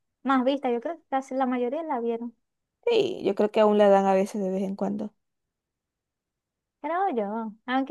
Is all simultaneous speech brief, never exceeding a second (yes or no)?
yes